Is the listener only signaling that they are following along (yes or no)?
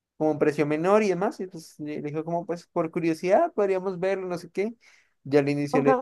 yes